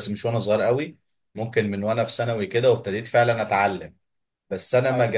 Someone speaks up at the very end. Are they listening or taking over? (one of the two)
listening